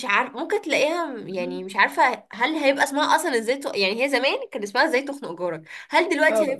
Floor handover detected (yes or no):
no